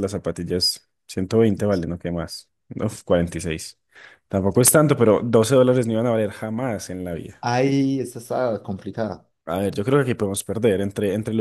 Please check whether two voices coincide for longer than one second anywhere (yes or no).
no